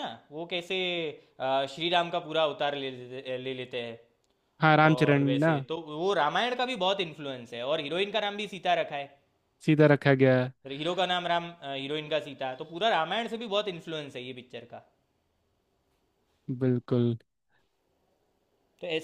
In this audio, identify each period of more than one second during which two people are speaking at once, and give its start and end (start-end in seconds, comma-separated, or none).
none